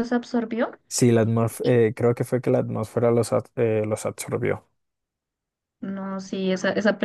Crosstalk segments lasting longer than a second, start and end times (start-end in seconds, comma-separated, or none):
none